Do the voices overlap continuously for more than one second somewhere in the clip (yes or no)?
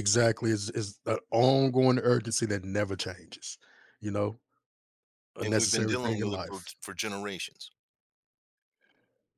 yes